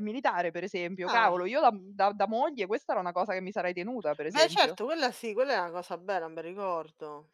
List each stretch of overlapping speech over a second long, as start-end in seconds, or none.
none